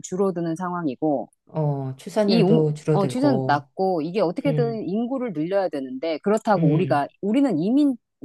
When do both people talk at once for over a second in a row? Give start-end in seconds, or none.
2.3-3.7